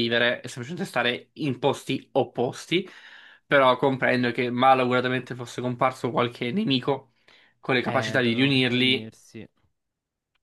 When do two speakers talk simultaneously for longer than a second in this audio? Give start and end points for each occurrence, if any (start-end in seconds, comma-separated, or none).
7.8-9.1